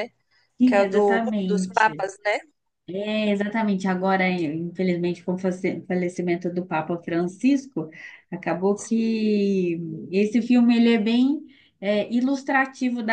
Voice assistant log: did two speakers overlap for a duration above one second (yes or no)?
yes